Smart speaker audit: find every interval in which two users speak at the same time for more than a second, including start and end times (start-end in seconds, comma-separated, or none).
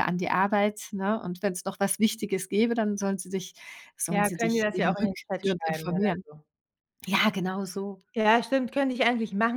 4.1-6.2